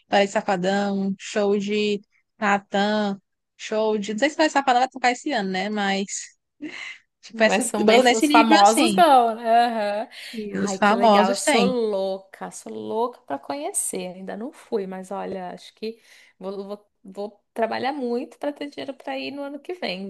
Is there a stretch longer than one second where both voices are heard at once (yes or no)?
yes